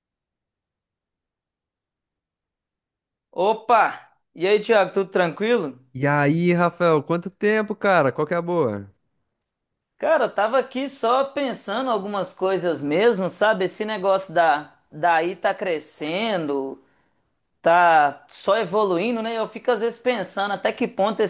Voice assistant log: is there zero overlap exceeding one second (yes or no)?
yes